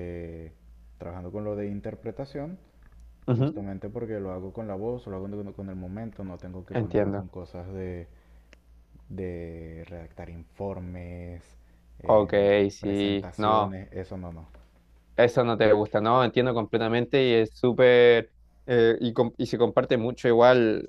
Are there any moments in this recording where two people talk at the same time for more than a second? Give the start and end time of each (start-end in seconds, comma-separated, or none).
12.0-13.8